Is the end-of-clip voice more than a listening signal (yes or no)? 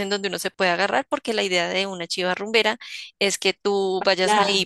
no